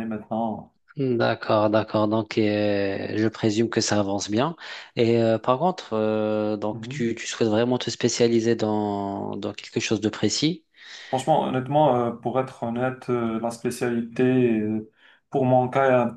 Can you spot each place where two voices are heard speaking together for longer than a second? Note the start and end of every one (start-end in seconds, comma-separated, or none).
none